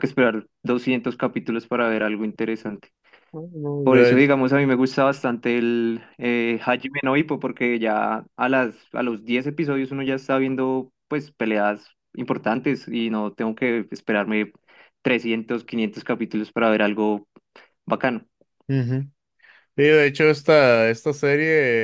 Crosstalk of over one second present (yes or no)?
no